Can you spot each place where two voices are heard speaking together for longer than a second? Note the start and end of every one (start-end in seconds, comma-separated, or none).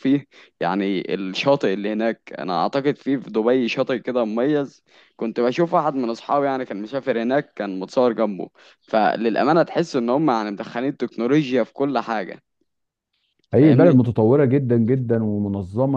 none